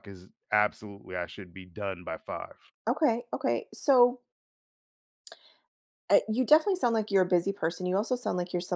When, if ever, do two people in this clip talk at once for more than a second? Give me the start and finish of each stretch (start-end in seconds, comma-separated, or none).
none